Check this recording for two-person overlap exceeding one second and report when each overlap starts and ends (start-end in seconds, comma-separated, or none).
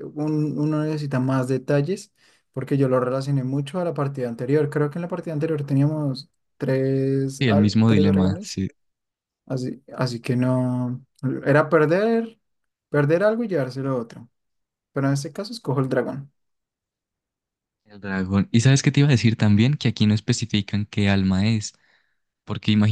7.4-8.6